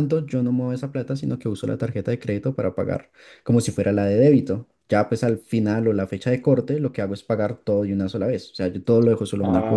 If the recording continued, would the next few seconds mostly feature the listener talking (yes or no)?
yes